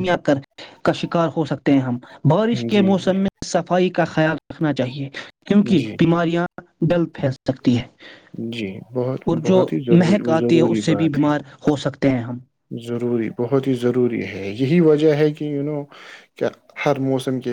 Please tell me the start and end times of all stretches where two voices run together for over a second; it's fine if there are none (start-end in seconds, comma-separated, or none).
9.3-11.3